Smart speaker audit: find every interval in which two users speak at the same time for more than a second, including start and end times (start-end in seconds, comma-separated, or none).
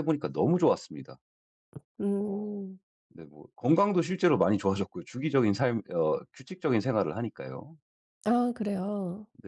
none